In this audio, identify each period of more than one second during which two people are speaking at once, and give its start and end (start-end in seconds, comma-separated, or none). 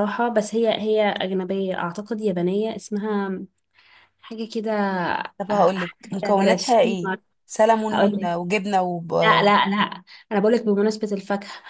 5.8-7.2